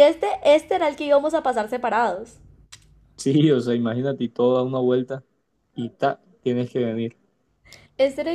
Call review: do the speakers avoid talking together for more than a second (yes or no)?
yes